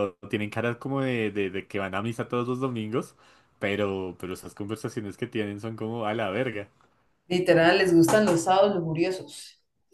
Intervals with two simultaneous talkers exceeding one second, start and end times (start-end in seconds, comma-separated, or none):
none